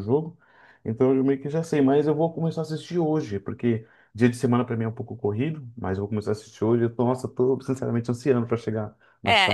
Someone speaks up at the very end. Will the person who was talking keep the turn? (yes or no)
no